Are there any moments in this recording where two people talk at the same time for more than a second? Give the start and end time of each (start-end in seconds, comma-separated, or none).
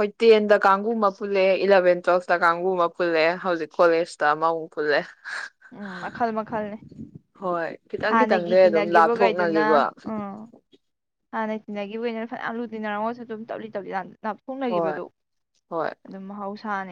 8.1-9.7